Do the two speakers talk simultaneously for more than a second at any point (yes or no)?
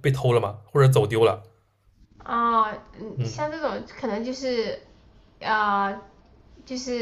no